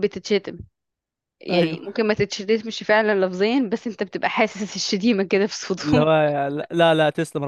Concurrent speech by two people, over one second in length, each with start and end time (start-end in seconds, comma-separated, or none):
none